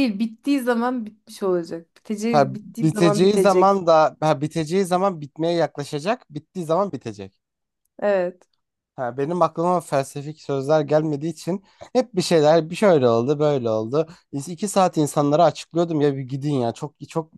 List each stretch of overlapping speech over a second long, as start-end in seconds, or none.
2.3-3.8